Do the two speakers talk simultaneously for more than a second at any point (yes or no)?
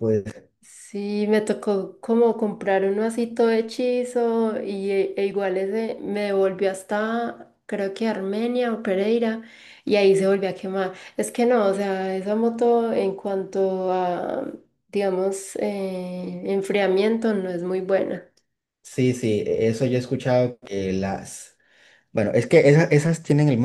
no